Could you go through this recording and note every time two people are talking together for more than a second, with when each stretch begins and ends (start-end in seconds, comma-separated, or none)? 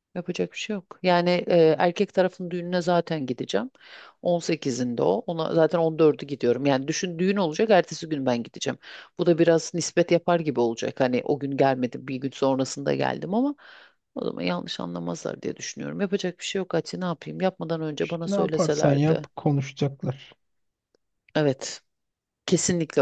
18.0-19.3